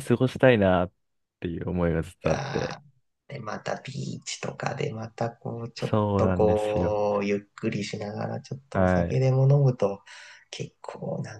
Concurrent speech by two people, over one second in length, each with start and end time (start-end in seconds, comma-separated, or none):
5.8-7.0